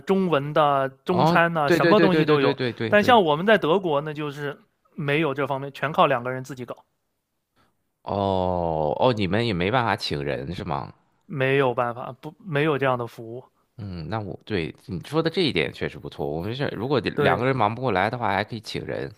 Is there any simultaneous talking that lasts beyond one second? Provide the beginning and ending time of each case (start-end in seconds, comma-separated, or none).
1.1-3.2